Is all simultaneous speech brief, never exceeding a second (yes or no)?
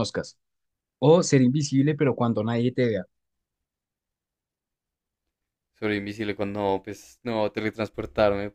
yes